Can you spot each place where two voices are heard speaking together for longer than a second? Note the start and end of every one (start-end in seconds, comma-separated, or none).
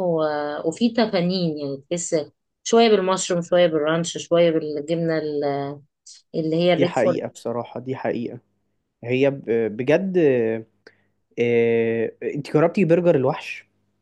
none